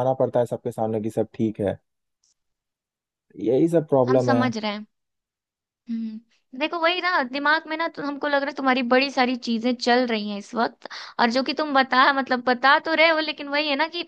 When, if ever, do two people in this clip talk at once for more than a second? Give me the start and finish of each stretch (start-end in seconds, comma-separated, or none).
none